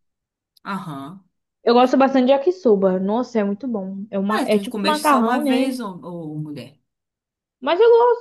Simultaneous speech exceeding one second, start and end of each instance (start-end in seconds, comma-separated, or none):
4.3-5.8